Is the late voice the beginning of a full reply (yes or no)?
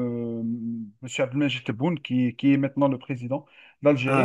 no